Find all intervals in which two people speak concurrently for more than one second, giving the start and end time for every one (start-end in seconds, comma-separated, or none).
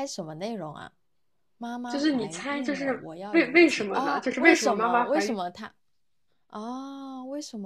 1.9-5.4